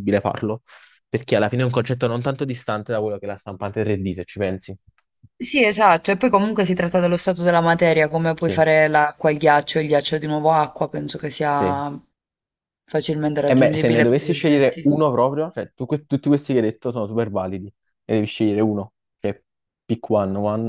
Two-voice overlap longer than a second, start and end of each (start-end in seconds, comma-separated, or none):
13.4-14.9